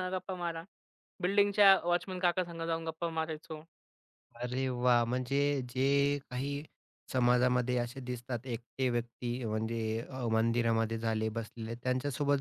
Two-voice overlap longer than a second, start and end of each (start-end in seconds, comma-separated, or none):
none